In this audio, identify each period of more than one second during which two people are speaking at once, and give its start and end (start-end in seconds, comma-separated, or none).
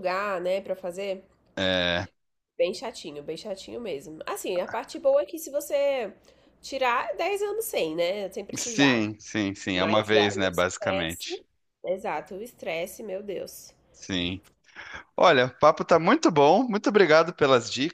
9.7-11.4